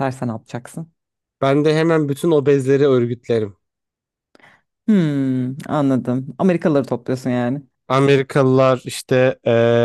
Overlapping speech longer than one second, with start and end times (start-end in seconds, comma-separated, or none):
none